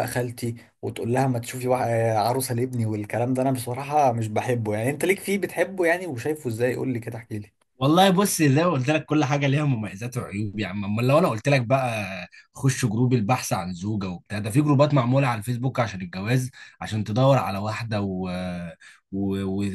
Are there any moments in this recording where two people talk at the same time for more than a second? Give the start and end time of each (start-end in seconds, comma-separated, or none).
none